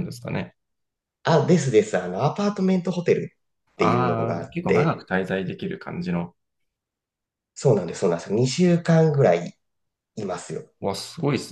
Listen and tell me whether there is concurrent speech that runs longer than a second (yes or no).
yes